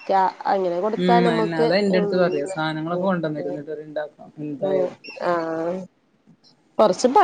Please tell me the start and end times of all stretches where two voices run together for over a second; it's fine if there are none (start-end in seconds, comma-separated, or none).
1.0-3.1